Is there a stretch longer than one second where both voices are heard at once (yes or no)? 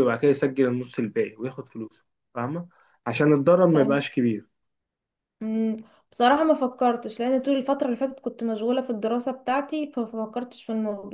no